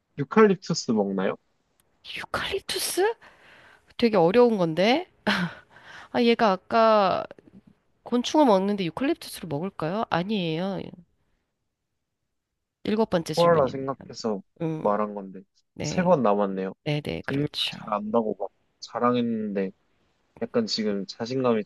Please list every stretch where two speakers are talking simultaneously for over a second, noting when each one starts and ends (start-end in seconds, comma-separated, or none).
none